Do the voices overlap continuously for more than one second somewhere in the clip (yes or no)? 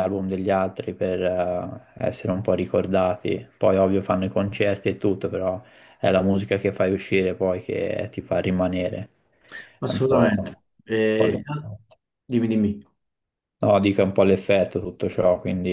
yes